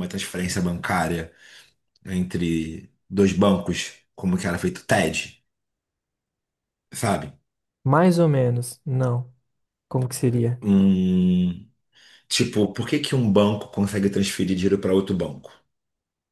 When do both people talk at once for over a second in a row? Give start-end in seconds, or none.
none